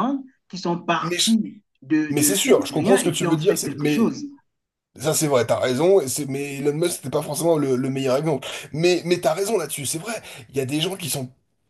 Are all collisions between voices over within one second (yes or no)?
no